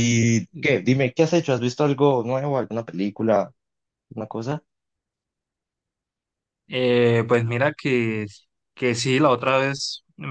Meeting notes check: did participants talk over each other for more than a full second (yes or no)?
no